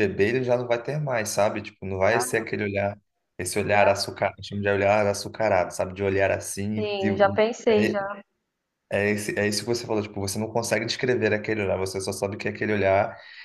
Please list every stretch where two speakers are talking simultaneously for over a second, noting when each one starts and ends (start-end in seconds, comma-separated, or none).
6.8-8.0